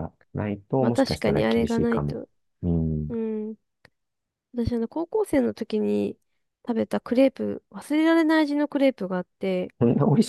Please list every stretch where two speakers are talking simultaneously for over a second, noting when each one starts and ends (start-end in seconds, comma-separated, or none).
0.8-2.2